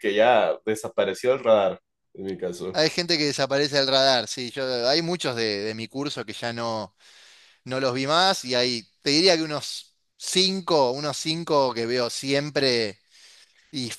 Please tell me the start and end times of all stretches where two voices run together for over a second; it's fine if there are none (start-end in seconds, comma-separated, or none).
none